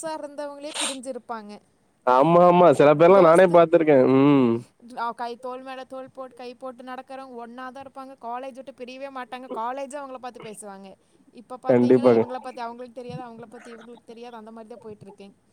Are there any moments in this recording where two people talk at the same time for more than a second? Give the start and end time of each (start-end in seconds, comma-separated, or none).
none